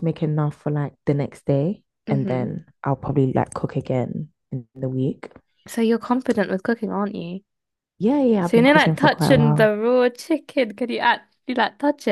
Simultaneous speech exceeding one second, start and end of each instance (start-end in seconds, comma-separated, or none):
8.4-9.7